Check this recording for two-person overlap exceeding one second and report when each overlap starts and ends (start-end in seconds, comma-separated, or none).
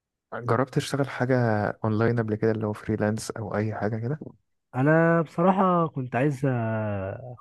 none